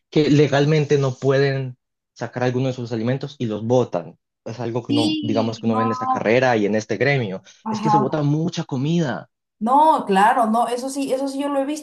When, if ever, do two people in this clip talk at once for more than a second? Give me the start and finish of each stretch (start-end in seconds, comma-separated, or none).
4.9-6.3